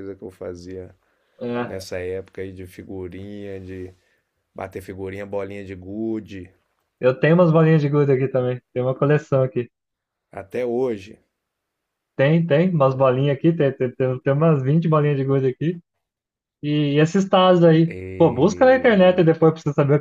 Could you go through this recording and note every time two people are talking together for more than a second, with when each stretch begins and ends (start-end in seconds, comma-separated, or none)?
17.9-19.3